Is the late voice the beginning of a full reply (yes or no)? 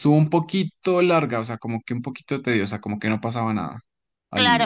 yes